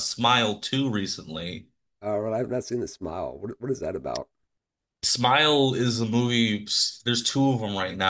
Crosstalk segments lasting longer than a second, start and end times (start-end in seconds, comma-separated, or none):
none